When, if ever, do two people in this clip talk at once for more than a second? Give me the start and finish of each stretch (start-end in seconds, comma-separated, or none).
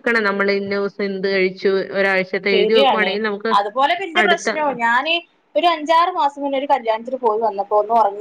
none